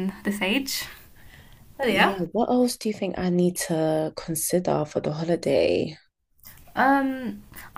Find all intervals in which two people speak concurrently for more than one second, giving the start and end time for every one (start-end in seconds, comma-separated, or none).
none